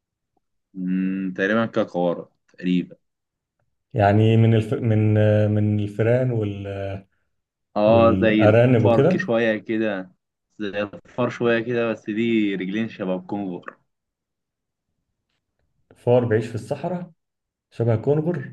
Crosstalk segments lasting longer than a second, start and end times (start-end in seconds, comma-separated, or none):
7.9-9.3